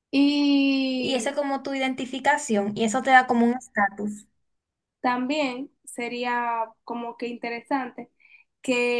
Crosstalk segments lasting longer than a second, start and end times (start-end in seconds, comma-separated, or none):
none